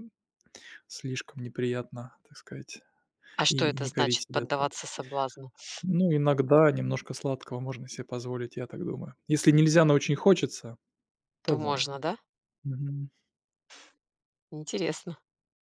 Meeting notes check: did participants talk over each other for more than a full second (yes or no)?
yes